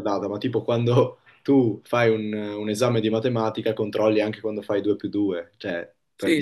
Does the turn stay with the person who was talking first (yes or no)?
no